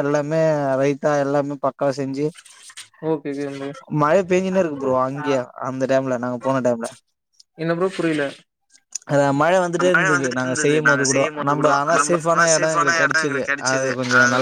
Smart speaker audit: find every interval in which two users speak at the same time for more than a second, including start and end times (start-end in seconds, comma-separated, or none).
10.5-13.5